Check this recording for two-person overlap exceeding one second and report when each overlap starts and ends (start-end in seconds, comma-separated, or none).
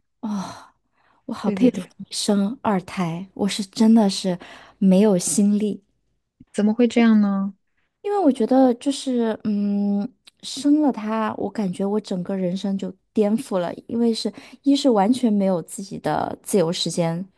none